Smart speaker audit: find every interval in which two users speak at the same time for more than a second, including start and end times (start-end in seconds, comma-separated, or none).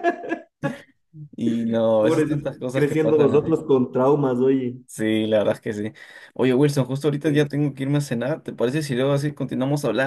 2.0-3.5